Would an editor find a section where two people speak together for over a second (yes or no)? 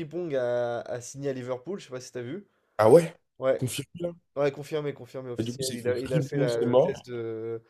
yes